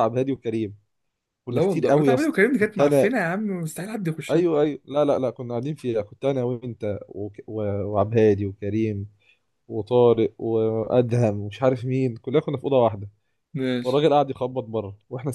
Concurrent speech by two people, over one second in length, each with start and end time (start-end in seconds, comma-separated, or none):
1.5-3.1